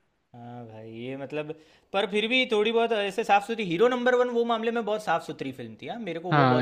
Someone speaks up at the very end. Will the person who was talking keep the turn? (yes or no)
no